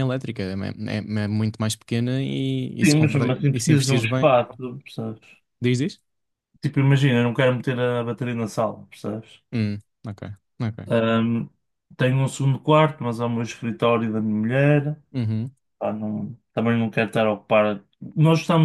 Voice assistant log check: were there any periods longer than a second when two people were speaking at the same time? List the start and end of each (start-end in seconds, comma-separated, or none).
2.8-4.3